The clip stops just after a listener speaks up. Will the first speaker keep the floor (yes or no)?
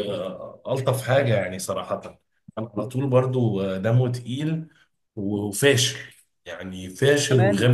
no